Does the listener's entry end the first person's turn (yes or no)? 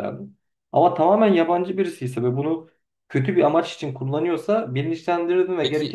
yes